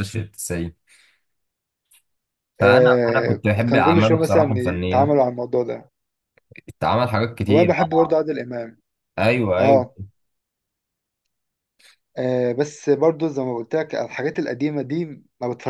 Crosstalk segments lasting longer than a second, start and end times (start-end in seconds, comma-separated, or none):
2.6-5.1